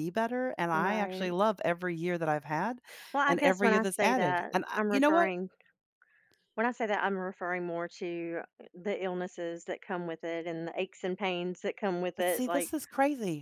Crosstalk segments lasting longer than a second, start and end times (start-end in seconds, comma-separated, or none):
3.3-5.3